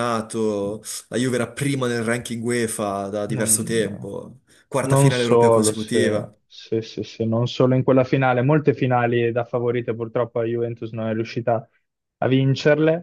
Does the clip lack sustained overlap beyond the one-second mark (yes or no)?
no